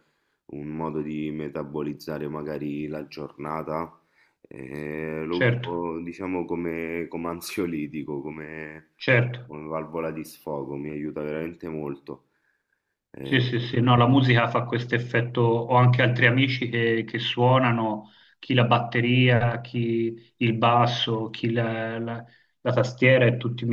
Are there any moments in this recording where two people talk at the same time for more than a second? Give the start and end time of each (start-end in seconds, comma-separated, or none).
none